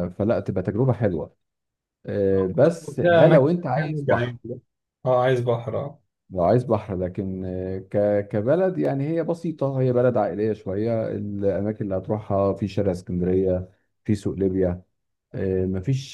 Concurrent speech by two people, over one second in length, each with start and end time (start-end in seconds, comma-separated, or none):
3.0-4.4